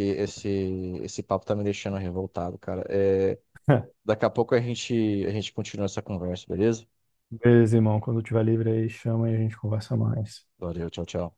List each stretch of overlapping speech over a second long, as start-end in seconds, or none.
none